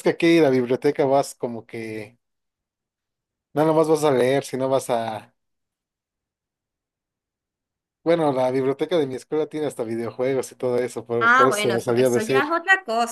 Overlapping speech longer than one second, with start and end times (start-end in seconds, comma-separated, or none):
11.2-12.4